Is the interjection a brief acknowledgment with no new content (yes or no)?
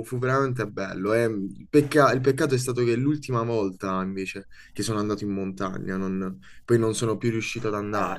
no